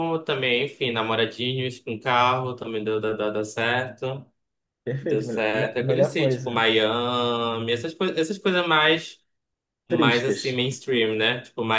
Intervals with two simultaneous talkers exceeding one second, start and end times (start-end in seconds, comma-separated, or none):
5.0-6.7